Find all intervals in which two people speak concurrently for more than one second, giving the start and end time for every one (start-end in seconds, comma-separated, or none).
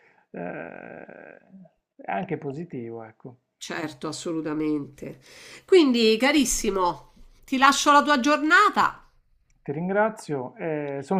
none